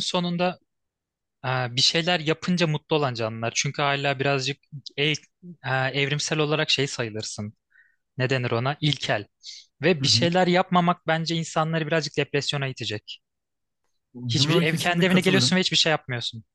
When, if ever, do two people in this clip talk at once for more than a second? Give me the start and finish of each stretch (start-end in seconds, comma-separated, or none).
14.3-15.7